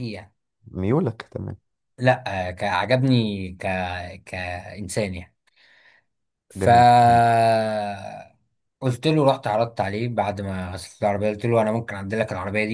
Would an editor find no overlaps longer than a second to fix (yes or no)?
yes